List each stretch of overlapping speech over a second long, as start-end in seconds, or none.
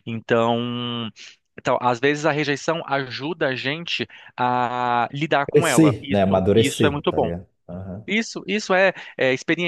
5.5-7.3